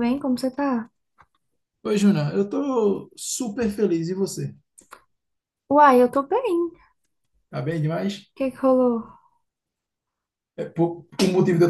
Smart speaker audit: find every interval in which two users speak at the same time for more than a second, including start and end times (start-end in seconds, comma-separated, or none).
none